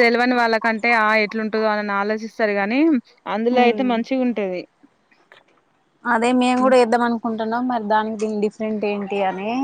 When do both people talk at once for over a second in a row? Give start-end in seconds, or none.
none